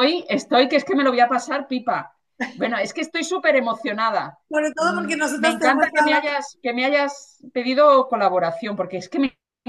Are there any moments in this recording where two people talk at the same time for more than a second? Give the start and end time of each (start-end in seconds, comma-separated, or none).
4.8-6.2